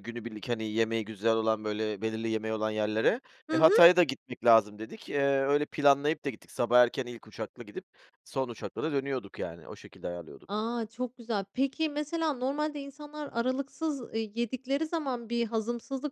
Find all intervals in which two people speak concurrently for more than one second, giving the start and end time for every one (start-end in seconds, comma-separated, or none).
none